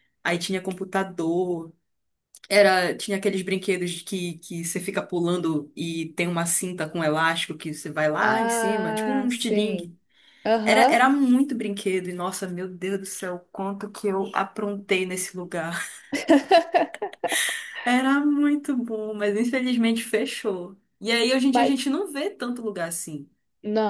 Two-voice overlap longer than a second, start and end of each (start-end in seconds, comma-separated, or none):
8.2-9.9